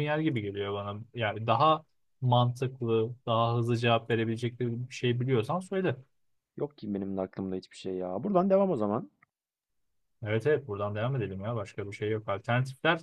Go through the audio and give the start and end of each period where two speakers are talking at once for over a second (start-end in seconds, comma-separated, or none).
none